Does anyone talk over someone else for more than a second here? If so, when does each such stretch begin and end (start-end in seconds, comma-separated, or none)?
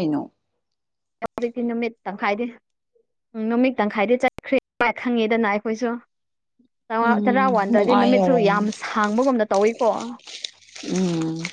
7.0-8.7